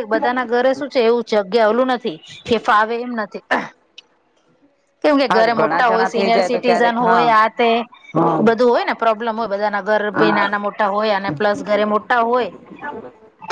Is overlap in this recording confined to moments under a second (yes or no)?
no